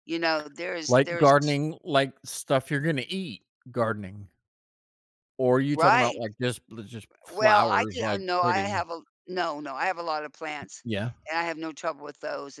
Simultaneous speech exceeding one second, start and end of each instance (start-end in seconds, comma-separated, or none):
7.3-8.9